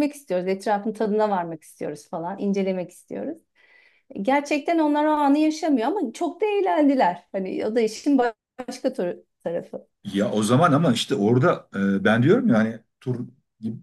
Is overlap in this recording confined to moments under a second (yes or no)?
yes